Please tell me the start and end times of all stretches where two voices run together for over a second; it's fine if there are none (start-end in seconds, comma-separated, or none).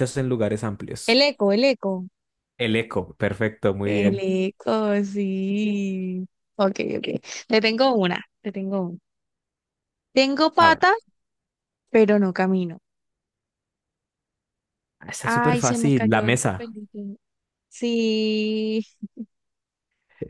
15.2-16.7